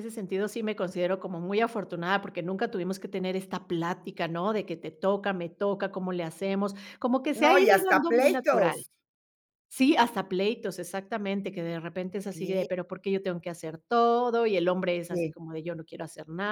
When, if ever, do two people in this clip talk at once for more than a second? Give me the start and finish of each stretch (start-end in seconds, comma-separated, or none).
7.3-8.8